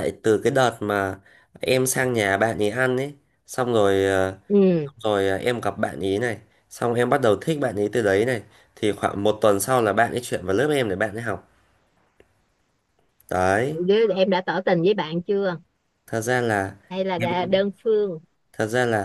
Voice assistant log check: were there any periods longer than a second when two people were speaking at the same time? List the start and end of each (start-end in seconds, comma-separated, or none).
none